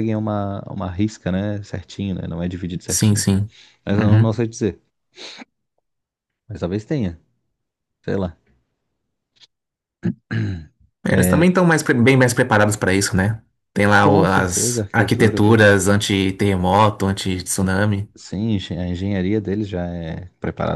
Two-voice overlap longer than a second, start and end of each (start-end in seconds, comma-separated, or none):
14.0-15.8